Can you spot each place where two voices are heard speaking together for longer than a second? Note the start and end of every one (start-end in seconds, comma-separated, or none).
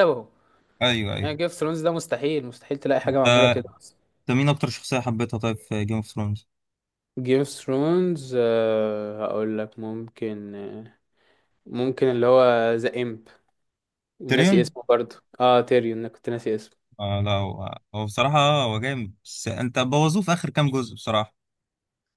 none